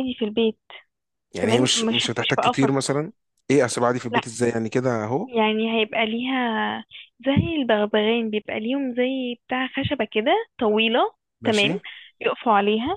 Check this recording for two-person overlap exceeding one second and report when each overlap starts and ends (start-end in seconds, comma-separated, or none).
1.4-3.0